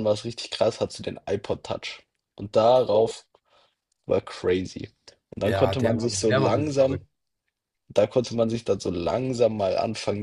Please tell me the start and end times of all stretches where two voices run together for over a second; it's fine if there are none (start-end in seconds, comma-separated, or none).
5.4-7.1